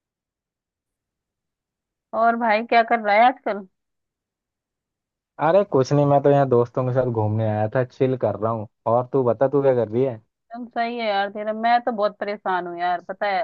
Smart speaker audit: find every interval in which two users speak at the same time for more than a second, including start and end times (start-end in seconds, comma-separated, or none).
none